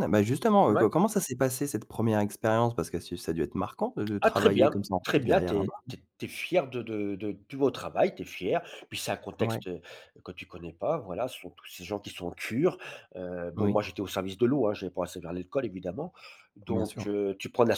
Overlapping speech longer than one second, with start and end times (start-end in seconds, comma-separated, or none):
4.2-5.8